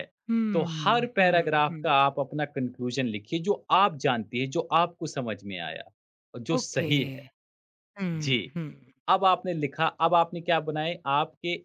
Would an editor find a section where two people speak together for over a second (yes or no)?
yes